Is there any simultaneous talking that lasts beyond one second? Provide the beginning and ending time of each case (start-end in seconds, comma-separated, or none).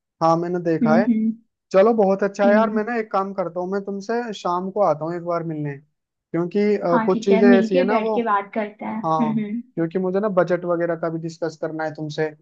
6.9-8.2